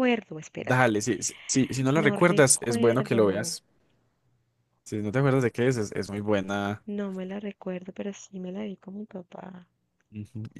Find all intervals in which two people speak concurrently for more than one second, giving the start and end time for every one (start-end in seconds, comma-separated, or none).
1.9-3.5